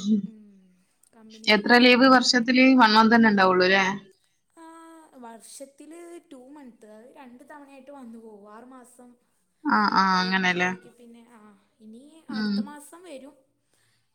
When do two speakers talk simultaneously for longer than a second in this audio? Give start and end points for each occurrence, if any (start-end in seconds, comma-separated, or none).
none